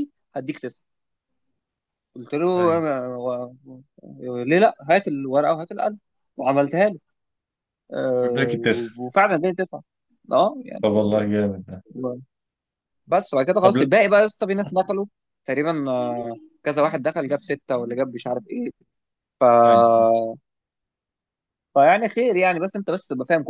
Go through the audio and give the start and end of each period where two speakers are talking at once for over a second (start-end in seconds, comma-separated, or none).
none